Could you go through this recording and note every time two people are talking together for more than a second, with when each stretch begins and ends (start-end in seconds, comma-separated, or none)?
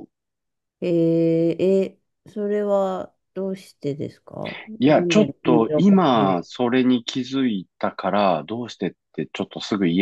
4.8-6.5